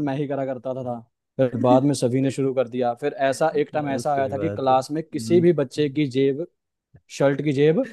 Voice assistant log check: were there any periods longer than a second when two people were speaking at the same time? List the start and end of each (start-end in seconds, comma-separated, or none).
3.5-5.5